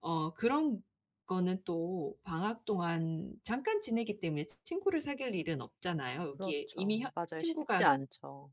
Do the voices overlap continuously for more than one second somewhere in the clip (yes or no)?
yes